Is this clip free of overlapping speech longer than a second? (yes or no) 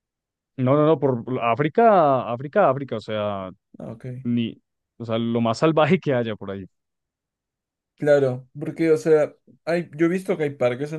yes